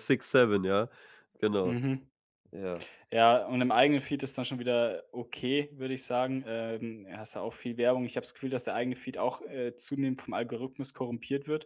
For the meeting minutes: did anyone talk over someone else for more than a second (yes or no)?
no